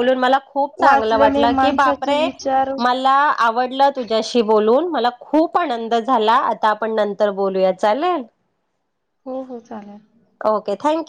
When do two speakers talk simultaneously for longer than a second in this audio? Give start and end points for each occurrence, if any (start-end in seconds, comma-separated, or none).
0.8-2.2